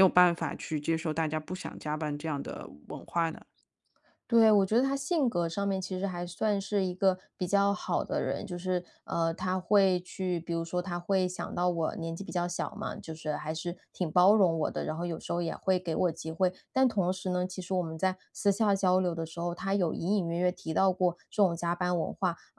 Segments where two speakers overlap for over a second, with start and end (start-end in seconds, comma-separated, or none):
none